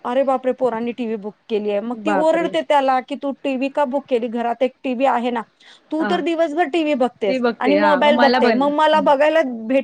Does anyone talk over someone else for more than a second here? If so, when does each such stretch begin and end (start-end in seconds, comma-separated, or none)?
7.3-8.7